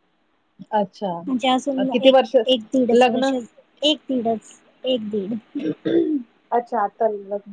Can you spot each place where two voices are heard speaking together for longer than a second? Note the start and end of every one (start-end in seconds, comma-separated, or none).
none